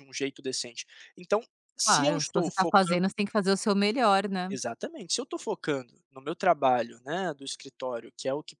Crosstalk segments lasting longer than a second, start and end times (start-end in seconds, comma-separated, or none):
1.8-3.1